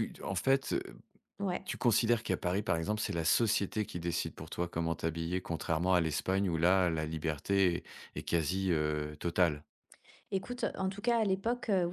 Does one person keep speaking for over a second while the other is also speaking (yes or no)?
no